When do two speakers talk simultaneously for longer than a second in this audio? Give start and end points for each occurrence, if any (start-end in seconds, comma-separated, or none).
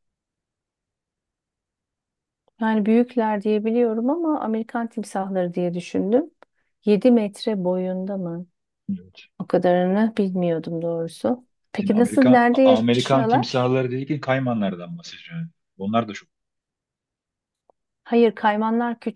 11.8-13.7